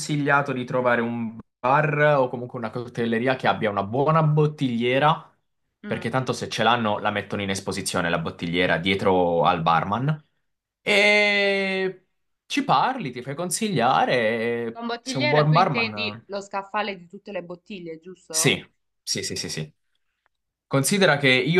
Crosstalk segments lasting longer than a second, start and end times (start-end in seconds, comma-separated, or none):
14.7-16.2